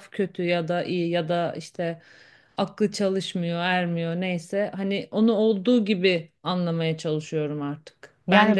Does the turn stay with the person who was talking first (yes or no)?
yes